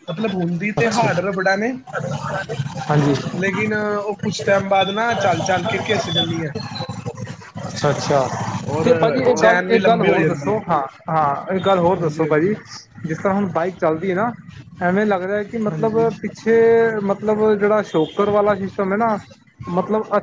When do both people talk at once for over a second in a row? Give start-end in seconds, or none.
8.8-10.6